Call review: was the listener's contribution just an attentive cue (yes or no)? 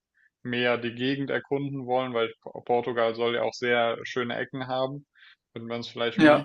yes